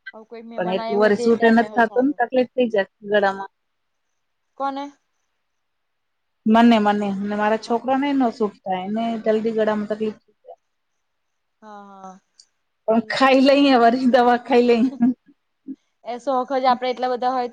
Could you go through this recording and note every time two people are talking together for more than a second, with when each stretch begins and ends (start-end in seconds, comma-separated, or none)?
0.5-2.2